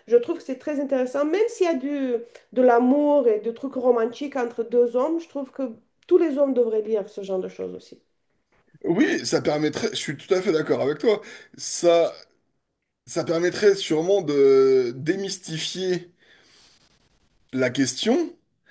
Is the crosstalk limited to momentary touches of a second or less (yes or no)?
yes